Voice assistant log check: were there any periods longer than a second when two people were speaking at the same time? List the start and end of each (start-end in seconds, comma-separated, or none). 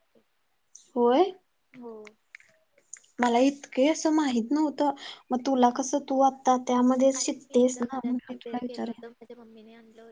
7.2-9.0